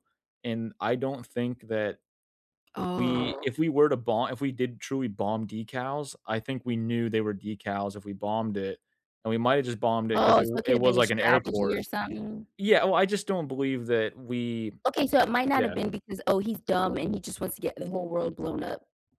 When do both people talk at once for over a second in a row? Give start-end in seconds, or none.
10.1-11.8